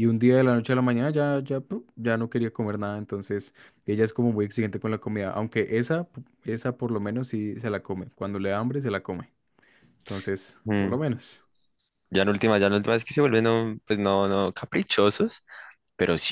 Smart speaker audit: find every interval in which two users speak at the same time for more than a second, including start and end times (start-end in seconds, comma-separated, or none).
none